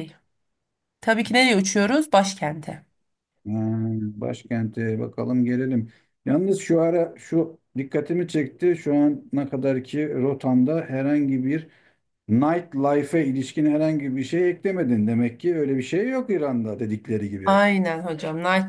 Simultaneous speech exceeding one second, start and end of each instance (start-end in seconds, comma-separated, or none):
none